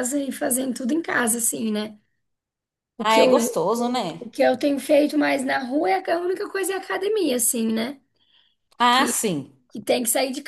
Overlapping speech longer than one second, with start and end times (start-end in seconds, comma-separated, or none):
none